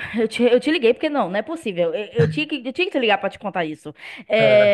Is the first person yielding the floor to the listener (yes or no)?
no